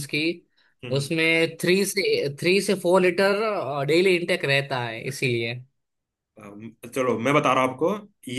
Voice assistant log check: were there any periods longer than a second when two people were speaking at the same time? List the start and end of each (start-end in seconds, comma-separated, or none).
none